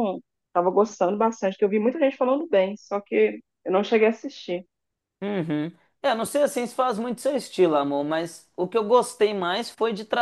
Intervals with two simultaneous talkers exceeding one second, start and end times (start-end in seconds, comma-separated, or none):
none